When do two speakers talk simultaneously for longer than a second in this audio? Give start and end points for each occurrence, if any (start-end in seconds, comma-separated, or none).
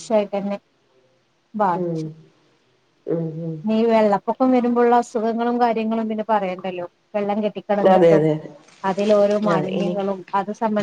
none